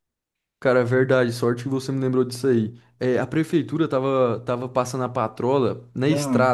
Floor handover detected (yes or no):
no